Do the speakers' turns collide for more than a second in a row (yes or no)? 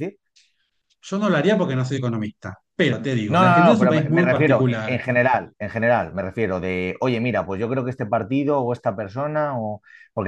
yes